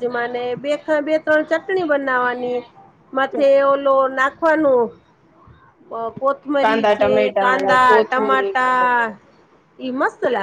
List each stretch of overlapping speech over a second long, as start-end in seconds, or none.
6.6-8.9